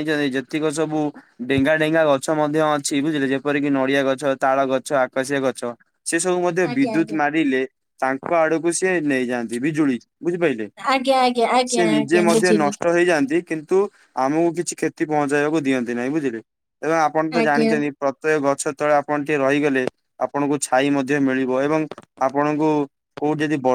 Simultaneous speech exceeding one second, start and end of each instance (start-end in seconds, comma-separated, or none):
10.9-12.8